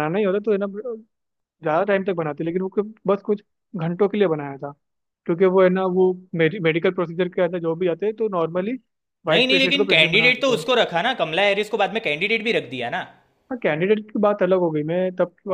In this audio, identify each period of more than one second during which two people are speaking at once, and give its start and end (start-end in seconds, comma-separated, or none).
9.3-10.6